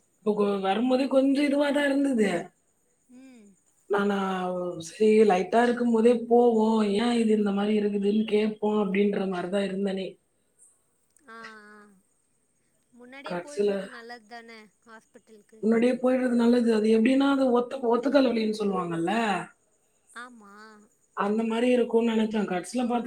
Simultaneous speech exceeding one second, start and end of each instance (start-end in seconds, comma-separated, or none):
none